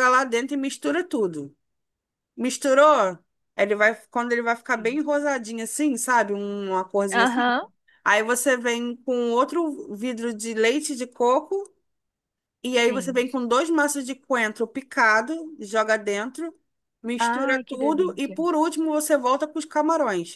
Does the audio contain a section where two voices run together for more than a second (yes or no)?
yes